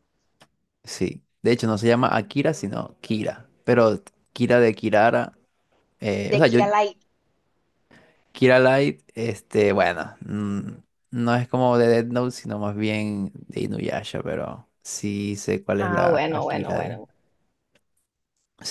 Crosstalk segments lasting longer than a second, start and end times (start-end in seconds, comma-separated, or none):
15.8-17.0